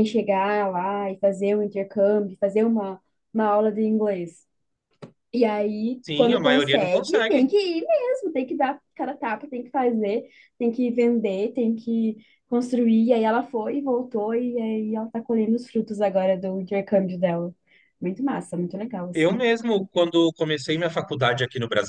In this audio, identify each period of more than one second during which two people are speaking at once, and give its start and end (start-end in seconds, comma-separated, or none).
6.0-7.4